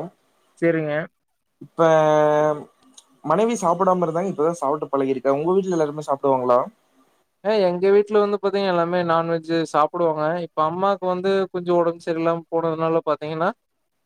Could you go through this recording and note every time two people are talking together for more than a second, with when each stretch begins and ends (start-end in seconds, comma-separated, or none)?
none